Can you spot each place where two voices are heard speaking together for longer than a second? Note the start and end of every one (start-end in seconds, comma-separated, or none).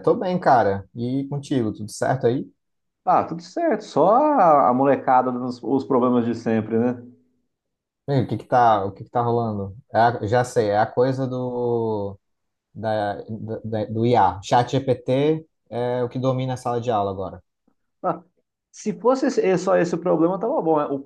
none